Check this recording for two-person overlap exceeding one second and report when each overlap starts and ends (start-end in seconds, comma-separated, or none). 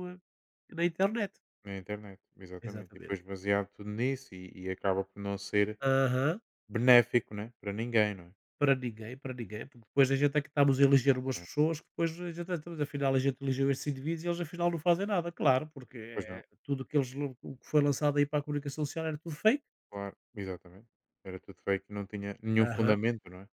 none